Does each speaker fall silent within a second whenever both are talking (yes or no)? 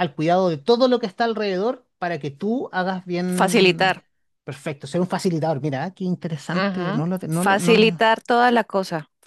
no